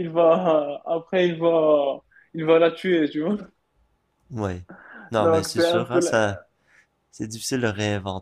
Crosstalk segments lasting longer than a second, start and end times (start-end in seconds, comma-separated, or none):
5.2-6.4